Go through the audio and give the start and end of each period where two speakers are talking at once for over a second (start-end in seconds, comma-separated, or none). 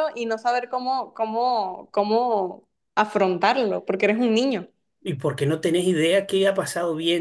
none